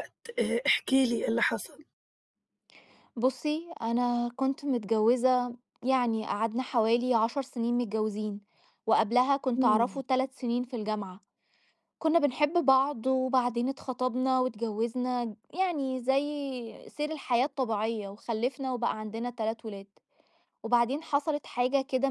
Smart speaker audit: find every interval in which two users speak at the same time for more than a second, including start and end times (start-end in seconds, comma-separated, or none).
none